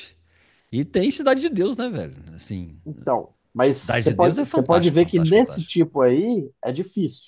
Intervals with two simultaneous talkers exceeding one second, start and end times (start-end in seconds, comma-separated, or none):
3.7-5.8